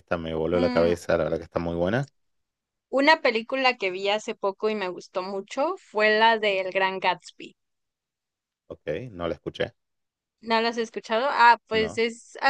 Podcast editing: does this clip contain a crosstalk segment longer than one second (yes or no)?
no